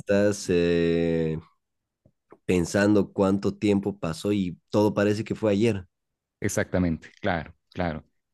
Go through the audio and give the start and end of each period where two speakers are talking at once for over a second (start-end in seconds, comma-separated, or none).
none